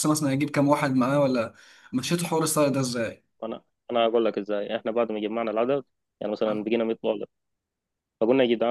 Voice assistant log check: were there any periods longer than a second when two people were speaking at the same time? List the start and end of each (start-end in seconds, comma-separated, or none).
none